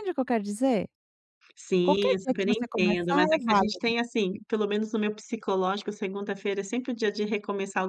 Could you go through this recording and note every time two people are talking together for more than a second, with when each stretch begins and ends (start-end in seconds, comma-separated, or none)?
1.8-3.9